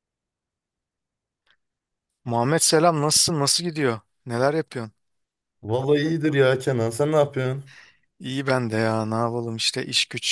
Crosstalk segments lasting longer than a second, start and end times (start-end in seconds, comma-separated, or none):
none